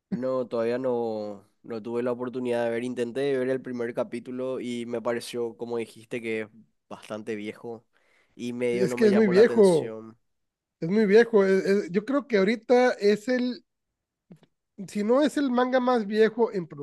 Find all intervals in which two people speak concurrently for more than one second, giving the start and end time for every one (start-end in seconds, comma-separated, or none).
8.7-9.9